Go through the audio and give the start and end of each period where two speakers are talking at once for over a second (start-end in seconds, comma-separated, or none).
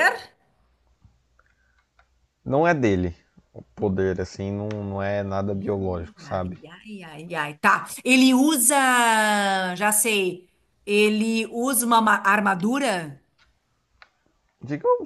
none